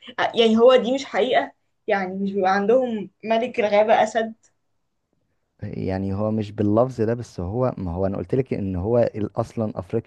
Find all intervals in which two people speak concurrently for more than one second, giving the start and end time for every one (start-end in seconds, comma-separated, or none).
none